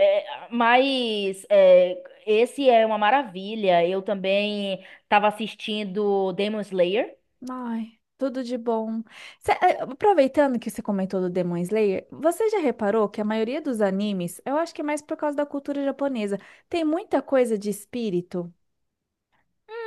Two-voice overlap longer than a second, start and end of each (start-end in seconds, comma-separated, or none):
none